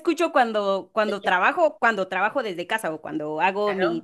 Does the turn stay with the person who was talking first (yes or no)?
yes